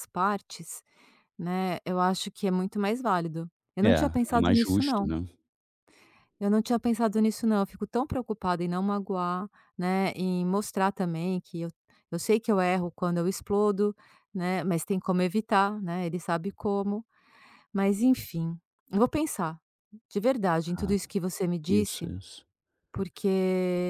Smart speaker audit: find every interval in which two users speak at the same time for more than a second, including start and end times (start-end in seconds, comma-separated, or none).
3.8-5.1